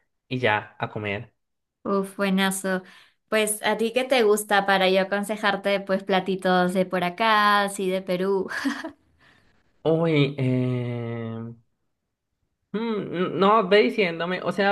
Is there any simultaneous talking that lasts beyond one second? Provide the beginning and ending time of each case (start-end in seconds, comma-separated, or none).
none